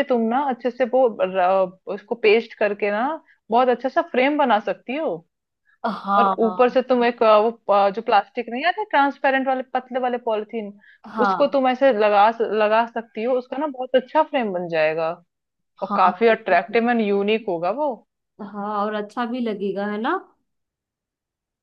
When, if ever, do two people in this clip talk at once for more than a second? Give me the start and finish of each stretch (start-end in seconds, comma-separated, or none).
none